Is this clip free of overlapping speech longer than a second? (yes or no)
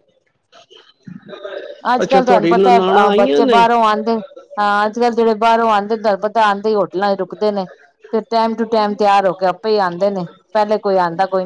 no